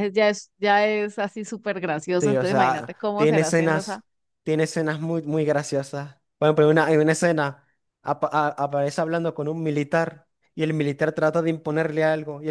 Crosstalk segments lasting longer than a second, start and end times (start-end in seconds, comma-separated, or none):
2.1-4.0